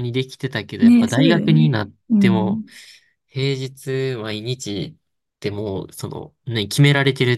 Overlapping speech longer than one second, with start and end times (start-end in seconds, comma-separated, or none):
0.8-2.6